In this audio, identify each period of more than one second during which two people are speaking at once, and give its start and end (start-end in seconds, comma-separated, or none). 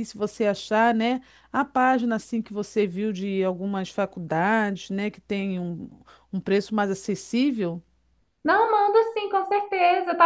none